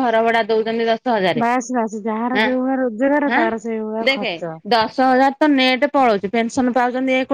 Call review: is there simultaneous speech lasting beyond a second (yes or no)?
no